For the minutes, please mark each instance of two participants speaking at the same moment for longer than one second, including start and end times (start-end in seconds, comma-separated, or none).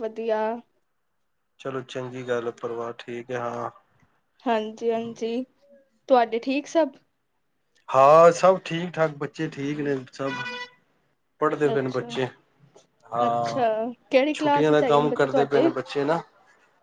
14.4-15.7